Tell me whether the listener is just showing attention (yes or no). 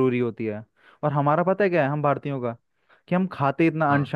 yes